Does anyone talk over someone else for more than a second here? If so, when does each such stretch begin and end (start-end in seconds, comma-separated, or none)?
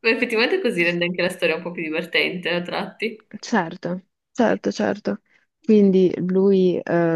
none